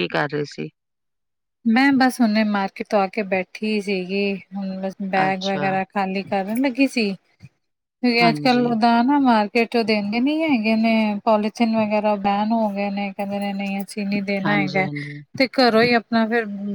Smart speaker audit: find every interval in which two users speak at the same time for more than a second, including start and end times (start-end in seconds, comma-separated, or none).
none